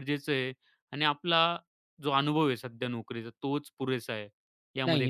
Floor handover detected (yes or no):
yes